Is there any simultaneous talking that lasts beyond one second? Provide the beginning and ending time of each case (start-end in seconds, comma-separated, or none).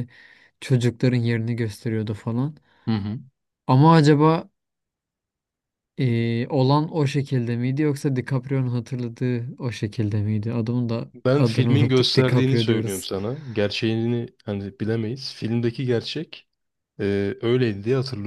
11.2-13.1